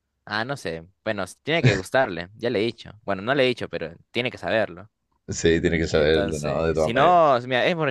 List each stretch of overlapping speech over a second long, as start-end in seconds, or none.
5.9-7.2